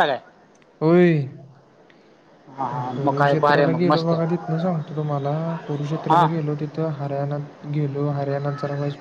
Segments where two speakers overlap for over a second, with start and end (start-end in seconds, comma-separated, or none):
2.7-4.4